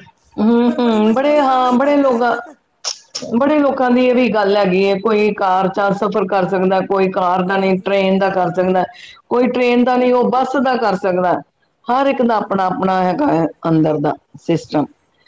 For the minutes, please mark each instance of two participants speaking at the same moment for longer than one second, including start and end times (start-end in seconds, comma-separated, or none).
0.6-2.2